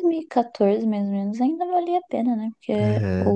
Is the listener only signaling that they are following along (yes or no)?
yes